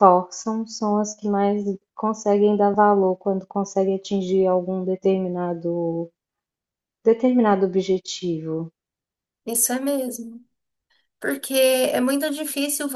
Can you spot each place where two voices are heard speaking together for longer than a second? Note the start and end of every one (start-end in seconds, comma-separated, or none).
none